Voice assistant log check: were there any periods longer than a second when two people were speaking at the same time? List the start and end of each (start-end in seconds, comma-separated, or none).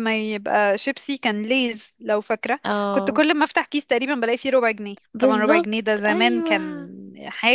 5.1-6.9